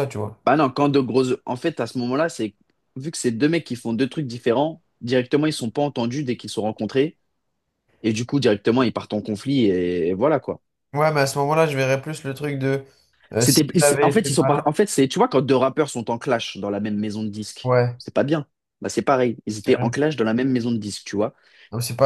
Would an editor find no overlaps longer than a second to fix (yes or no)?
no